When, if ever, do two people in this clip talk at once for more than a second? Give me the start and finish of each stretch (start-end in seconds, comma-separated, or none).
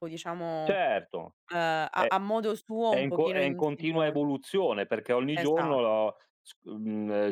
2.9-4.2